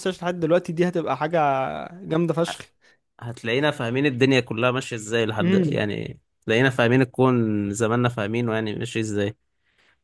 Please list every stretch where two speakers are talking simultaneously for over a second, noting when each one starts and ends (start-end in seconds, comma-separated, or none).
none